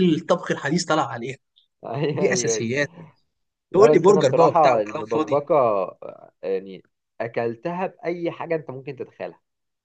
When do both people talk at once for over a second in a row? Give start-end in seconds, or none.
3.7-5.4